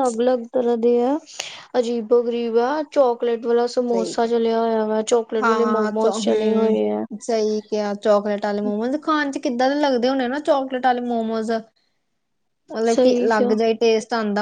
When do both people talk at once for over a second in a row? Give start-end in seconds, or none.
5.4-7.0